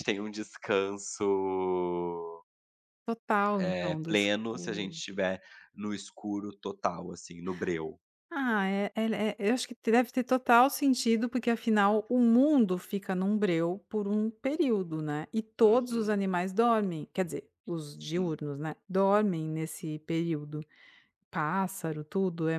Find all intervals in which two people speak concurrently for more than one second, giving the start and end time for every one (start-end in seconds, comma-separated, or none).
3.6-5.0